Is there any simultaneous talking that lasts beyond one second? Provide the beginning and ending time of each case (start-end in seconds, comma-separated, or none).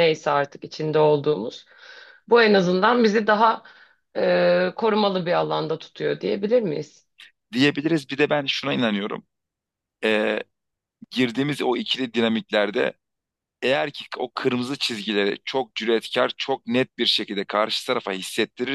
none